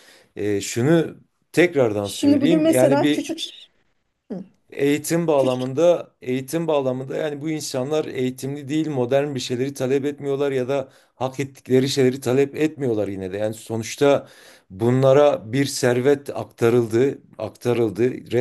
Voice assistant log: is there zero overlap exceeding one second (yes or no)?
no